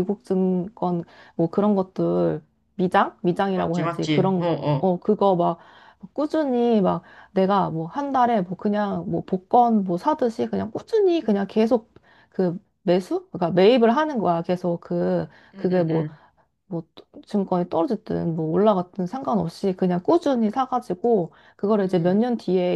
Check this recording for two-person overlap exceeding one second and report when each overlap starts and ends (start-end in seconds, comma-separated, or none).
3.5-4.9